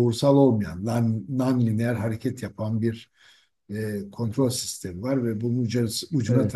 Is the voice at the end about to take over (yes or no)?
no